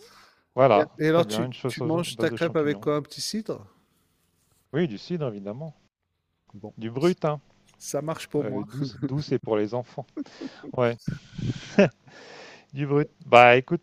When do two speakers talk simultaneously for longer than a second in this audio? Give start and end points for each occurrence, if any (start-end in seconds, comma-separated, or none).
0.7-2.9